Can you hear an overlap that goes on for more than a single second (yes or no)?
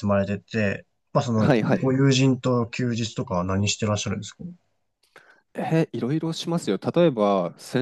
no